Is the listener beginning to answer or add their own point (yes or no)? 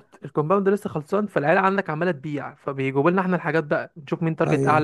no